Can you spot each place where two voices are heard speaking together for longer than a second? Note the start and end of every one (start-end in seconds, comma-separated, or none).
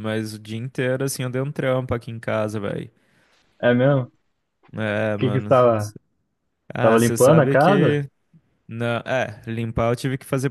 6.8-8.0